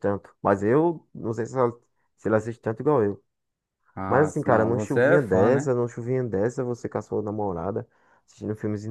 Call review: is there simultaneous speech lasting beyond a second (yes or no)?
yes